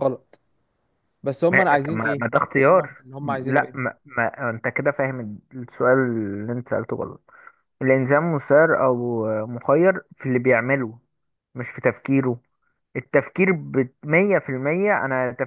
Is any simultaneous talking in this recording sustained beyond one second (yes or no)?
yes